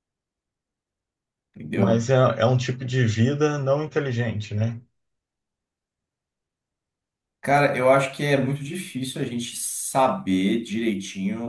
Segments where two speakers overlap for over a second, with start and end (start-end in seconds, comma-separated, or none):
none